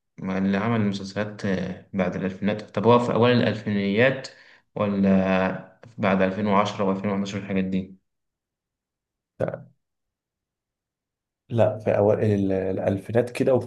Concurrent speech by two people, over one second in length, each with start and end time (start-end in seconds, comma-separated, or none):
none